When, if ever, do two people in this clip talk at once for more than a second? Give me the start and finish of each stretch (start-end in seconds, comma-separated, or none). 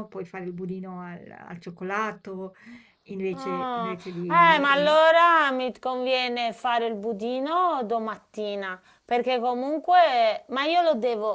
3.4-5.0